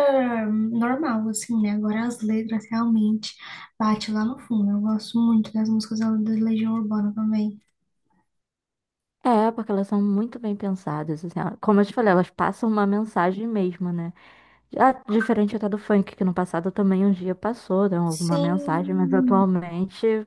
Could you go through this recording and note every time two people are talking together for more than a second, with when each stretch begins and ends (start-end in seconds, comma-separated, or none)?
18.1-19.4